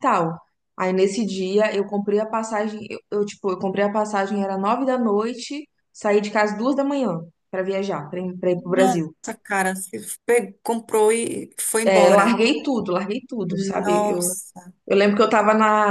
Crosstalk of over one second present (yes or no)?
no